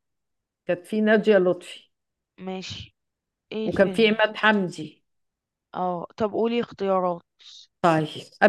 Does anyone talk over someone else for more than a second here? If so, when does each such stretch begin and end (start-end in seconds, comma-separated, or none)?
none